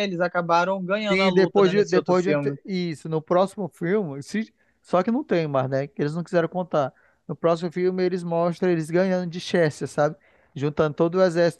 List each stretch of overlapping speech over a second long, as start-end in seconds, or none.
1.1-2.5